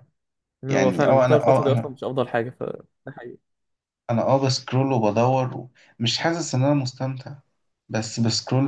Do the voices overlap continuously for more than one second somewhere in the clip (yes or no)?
yes